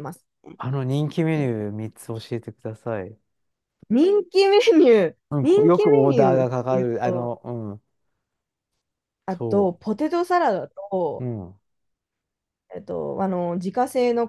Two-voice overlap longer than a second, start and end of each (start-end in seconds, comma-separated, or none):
5.3-7.4